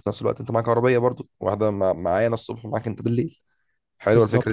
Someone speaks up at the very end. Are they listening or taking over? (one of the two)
taking over